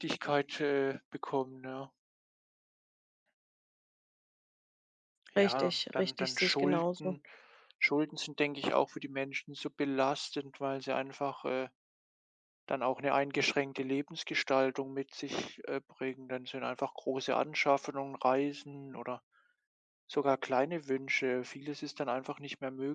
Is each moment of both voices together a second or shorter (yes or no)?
no